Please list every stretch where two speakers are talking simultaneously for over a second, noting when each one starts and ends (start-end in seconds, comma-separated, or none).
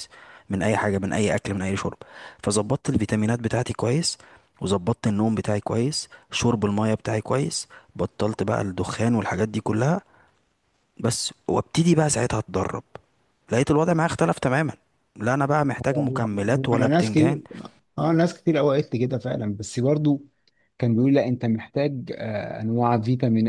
15.9-17.4